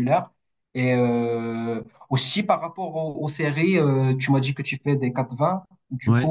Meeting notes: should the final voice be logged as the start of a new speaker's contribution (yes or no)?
no